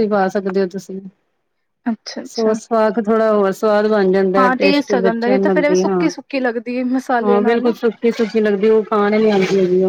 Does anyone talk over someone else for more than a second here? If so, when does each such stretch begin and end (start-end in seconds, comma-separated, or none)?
4.4-6.1